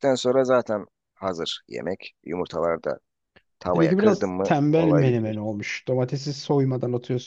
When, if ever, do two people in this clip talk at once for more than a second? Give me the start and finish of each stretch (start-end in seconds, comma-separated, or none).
3.6-5.4